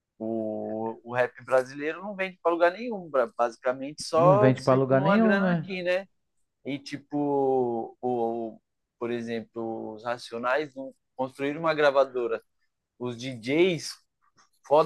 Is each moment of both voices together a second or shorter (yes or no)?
no